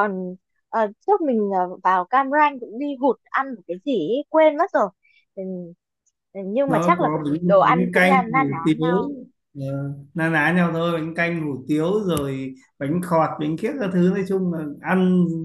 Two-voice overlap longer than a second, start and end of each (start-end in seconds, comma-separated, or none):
6.7-8.8